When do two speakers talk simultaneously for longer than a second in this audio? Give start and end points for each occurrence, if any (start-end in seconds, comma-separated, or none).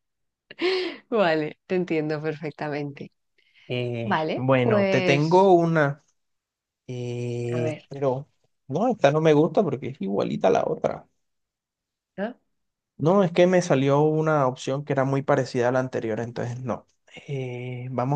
4.0-5.5